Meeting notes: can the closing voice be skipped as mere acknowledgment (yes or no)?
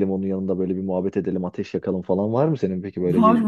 no